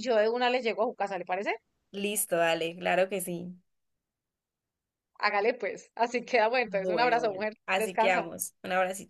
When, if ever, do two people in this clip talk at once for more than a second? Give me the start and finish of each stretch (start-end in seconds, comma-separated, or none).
6.7-8.3